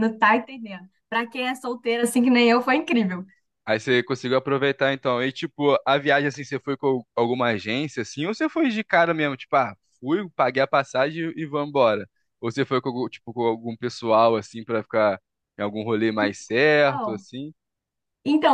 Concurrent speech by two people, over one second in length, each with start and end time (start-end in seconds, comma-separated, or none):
none